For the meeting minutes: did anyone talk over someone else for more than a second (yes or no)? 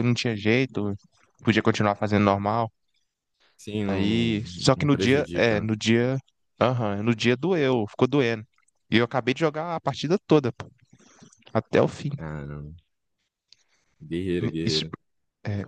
yes